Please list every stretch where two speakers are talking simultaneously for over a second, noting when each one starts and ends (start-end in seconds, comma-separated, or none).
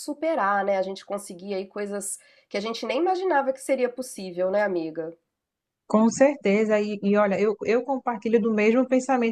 none